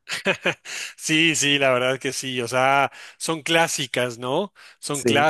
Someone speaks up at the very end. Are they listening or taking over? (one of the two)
listening